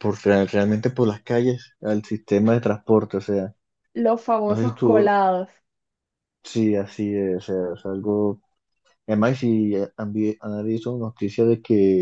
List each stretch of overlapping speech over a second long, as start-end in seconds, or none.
none